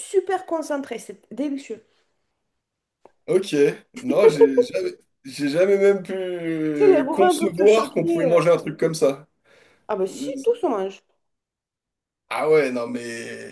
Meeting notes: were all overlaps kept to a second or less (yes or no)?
no